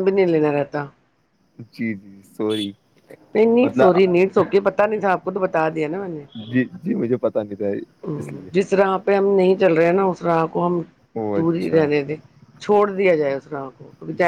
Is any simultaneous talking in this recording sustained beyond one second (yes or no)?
no